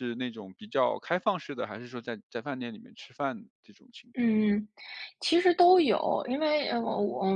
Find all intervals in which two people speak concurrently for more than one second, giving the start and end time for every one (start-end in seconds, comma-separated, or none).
none